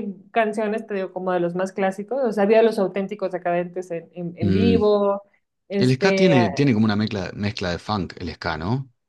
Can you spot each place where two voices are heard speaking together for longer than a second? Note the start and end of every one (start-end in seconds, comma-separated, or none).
none